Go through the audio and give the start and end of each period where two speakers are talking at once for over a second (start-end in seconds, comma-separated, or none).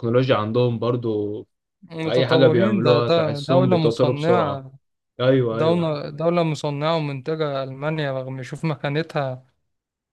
2.0-4.6